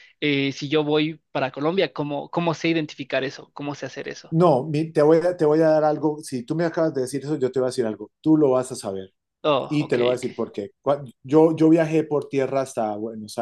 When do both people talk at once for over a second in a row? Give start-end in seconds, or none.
none